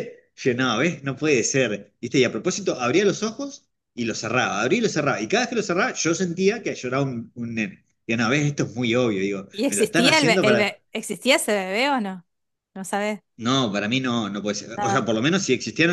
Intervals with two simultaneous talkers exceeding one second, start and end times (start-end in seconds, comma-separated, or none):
9.5-10.8